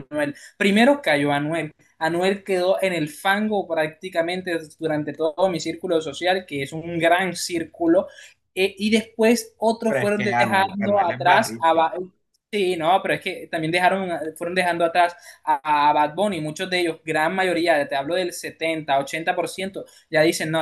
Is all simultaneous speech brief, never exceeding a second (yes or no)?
no